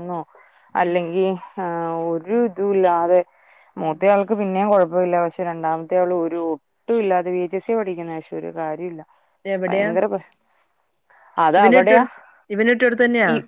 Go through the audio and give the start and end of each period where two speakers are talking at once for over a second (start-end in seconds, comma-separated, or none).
none